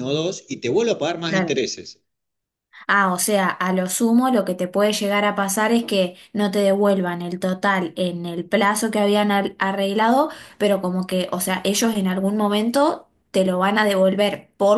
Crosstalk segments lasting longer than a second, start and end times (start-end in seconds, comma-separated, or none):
none